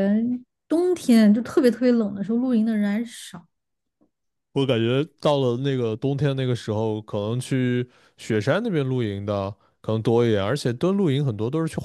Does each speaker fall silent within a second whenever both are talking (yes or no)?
yes